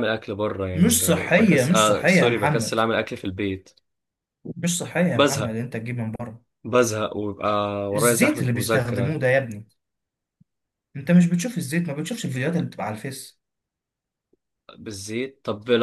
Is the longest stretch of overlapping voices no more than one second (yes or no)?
no